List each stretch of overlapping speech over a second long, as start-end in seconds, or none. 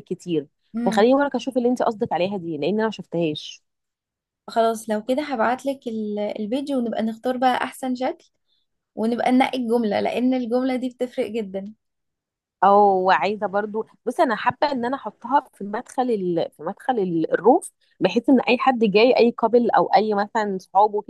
none